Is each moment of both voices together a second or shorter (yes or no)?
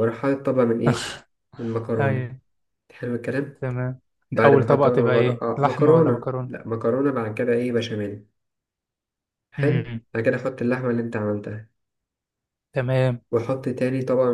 no